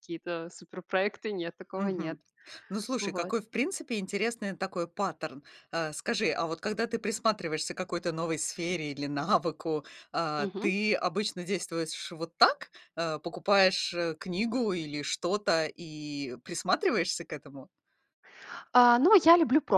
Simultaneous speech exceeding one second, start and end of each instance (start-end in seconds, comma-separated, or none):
none